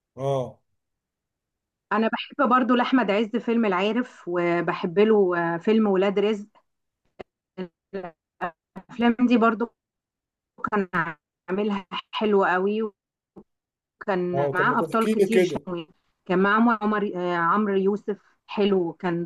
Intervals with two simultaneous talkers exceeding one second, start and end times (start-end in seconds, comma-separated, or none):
14.3-15.6